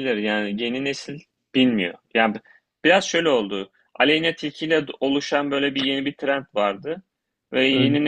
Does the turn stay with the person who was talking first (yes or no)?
yes